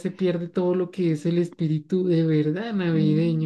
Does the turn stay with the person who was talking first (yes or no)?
no